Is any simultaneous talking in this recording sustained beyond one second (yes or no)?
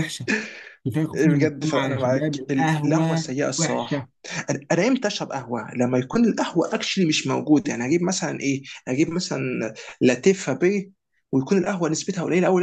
yes